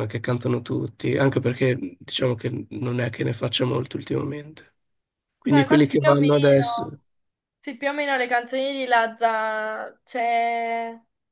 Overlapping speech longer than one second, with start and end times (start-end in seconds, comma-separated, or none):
5.5-6.9